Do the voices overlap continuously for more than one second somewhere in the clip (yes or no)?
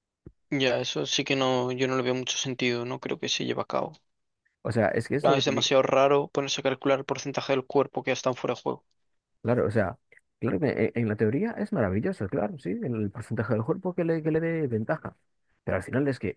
no